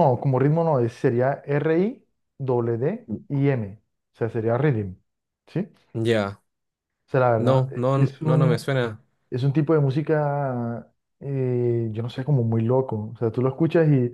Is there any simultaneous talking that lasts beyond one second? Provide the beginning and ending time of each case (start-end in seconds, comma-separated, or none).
7.4-8.7